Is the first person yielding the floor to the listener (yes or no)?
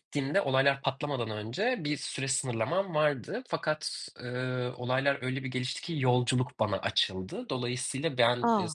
no